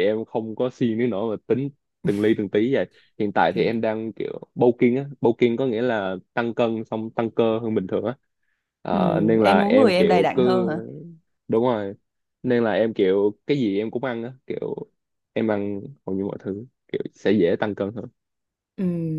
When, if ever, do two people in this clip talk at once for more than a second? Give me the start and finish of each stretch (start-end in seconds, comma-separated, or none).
8.9-10.4